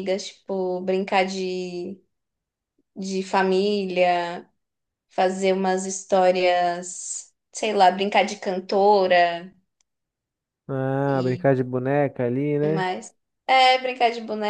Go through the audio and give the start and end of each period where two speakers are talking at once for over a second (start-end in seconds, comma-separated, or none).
none